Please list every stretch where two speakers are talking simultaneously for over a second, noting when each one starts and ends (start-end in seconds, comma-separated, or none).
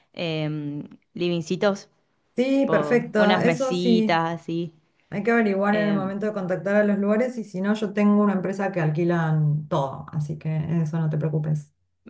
2.5-4.2